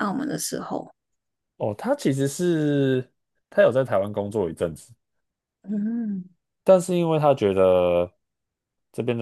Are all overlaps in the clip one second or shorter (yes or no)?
yes